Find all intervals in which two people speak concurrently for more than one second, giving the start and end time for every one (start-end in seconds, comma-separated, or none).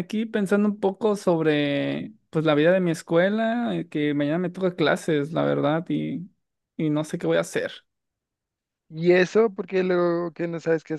none